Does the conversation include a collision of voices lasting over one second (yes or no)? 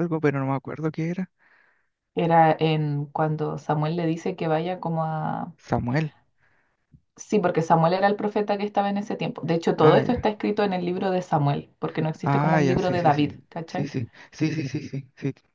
yes